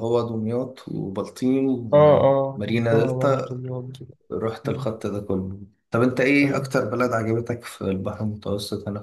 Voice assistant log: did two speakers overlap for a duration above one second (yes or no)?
yes